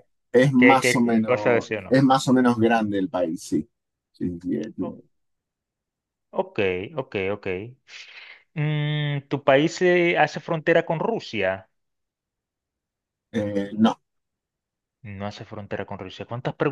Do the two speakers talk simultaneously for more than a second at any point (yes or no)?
yes